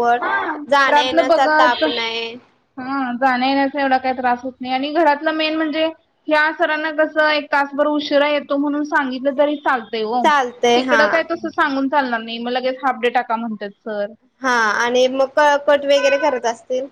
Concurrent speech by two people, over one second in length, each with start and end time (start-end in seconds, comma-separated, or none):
0.7-2.1